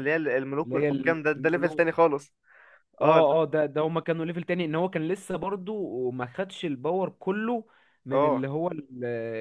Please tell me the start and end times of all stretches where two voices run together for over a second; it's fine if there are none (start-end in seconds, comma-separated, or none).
0.6-2.0